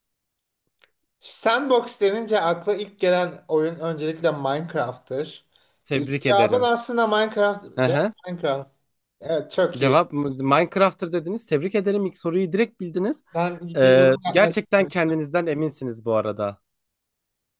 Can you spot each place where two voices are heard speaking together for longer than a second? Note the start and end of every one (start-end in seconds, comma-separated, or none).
13.8-15.2